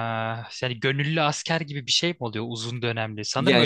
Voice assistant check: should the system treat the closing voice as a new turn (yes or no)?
no